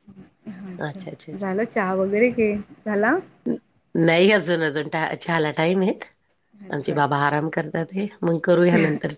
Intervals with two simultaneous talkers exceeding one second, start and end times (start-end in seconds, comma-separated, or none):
none